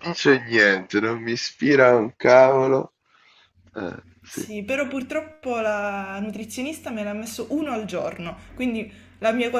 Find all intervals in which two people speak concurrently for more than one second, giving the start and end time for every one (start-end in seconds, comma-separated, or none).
none